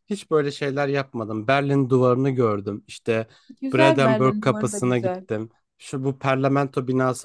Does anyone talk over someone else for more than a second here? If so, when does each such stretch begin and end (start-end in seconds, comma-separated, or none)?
3.7-5.2